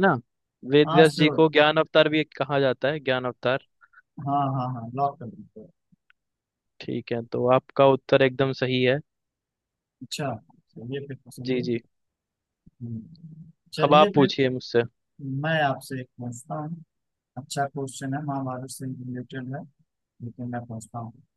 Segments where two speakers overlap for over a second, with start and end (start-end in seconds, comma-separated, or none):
none